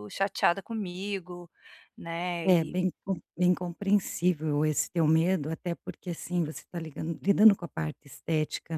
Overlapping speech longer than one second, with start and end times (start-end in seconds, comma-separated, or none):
none